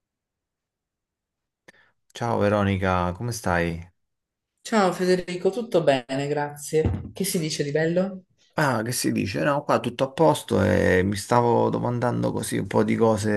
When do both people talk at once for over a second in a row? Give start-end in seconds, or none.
none